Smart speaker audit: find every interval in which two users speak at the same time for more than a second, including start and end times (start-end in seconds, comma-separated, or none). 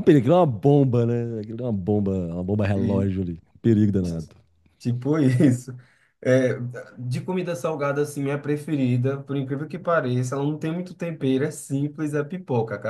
none